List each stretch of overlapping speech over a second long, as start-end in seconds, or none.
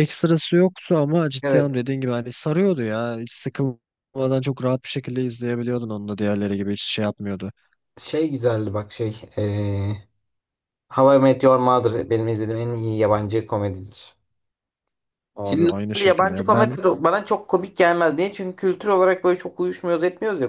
15.4-16.8